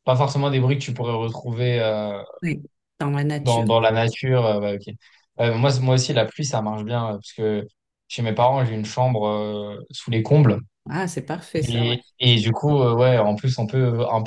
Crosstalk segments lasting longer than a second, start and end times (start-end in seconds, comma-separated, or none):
none